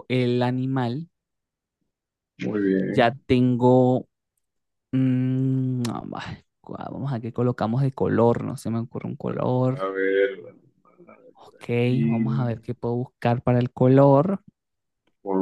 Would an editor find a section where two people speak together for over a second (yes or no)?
no